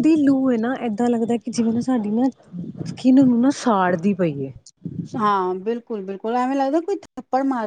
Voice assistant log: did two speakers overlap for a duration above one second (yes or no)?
no